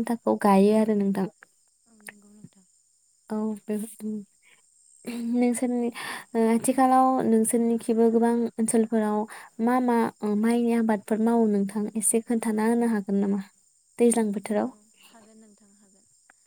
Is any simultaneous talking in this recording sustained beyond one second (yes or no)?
no